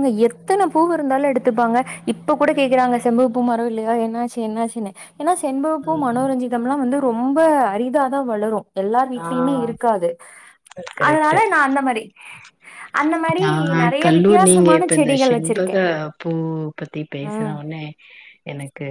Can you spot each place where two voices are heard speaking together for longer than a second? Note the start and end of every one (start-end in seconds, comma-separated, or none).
14.0-15.8